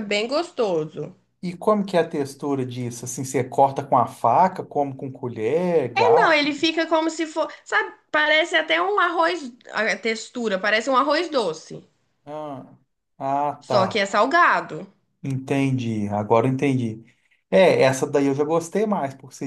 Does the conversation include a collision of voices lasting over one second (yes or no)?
no